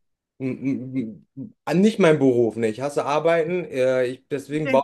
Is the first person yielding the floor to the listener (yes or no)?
no